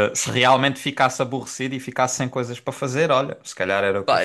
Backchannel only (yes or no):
no